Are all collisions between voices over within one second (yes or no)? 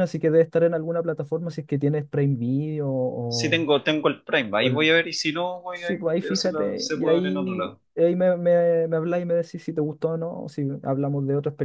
no